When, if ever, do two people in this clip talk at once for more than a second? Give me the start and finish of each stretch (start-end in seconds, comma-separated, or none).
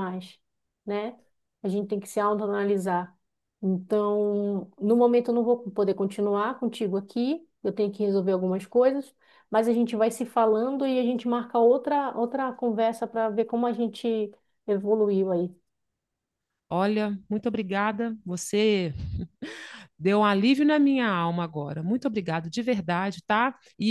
none